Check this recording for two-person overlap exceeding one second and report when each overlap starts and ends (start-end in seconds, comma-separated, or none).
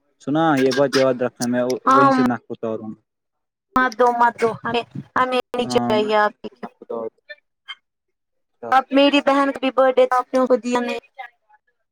none